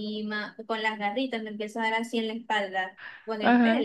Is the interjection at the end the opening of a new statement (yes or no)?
no